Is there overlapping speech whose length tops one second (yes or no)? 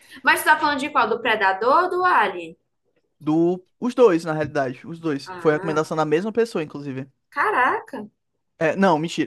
no